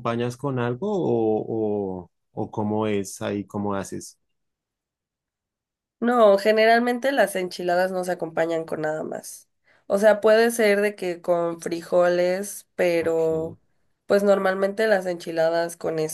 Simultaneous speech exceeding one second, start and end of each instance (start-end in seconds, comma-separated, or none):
none